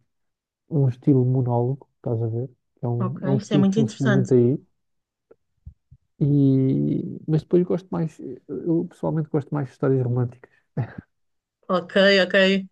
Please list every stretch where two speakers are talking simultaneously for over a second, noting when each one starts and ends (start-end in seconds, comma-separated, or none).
3.0-4.3